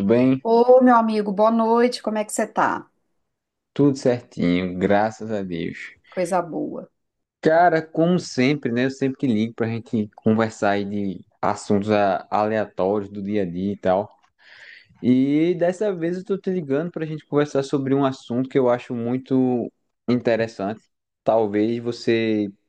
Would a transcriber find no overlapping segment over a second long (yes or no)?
yes